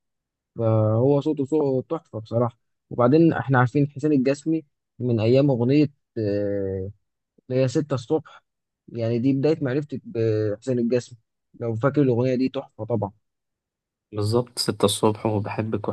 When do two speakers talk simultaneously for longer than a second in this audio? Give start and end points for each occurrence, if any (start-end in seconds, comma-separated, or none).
none